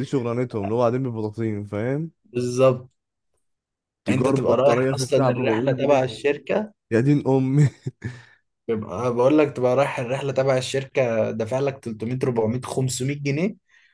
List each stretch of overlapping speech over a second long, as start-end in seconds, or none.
4.1-6.1